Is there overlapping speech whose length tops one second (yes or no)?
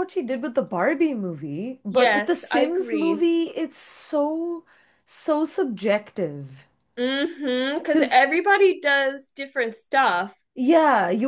yes